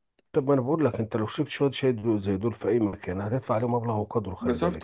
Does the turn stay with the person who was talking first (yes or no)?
no